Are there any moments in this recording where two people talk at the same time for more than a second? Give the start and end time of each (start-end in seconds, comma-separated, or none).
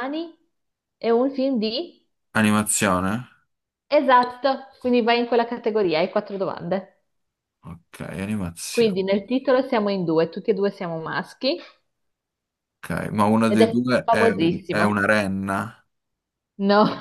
13.5-15.0